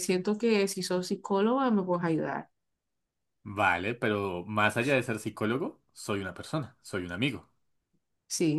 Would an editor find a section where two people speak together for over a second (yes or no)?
no